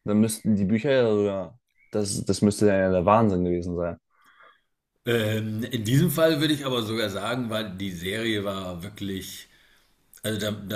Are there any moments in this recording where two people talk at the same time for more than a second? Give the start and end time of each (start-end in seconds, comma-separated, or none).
none